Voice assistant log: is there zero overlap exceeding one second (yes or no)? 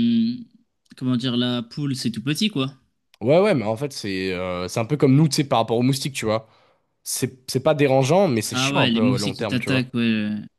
no